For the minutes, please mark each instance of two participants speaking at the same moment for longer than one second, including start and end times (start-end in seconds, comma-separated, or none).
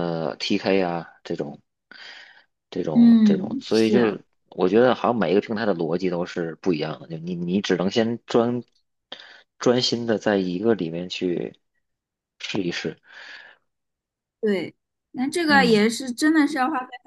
2.9-4.2